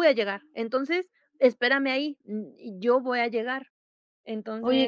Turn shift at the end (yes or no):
yes